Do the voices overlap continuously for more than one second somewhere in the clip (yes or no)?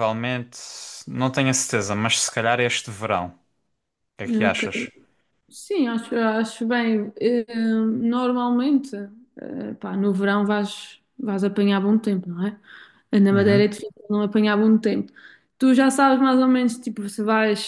no